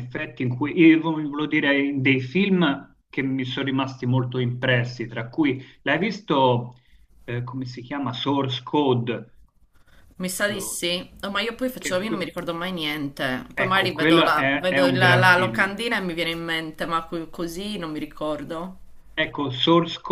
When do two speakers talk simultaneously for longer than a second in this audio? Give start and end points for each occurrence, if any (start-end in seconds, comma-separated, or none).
13.6-15.7